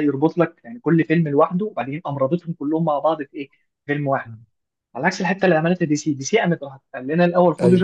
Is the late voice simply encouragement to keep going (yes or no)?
yes